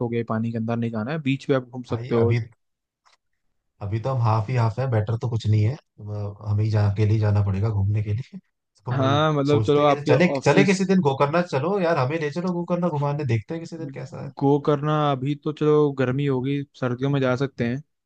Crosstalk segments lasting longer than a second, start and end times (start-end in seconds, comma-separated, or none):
8.9-10.8